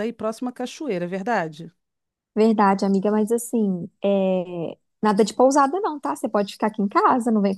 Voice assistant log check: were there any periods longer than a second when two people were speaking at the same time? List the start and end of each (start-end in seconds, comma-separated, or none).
none